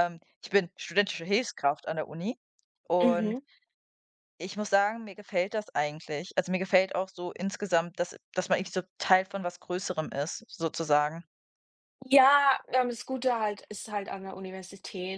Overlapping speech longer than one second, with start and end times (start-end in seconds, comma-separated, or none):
none